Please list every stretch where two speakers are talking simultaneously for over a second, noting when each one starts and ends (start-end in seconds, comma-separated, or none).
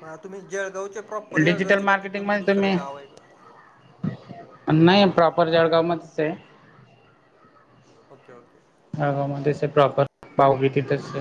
1.4-2.7